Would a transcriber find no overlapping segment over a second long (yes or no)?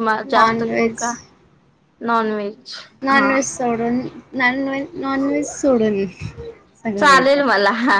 yes